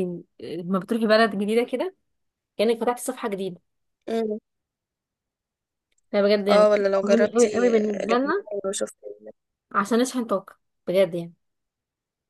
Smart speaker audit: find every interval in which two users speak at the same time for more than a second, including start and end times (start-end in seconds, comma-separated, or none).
6.5-8.5